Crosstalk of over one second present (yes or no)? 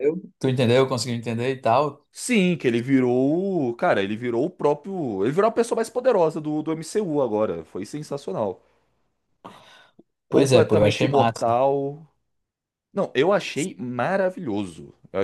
yes